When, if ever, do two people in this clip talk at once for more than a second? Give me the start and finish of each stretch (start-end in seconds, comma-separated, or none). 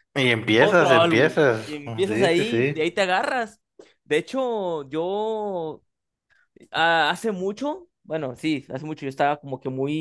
0.6-2.9